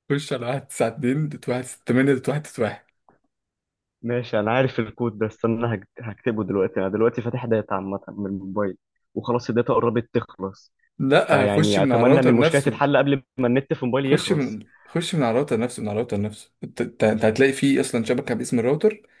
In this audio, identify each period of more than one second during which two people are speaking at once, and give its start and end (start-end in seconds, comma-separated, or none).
11.3-12.8